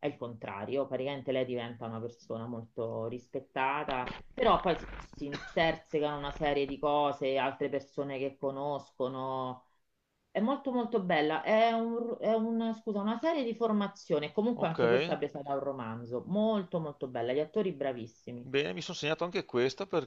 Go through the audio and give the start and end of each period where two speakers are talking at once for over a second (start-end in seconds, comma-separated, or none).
none